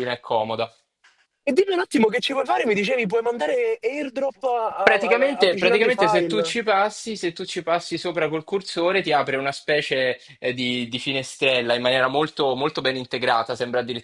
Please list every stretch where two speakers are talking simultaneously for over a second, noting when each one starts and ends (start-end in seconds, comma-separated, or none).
4.8-6.6